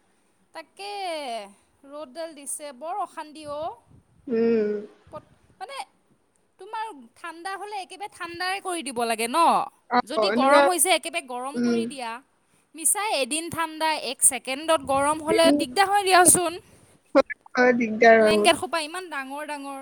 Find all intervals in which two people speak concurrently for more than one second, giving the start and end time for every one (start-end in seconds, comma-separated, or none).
none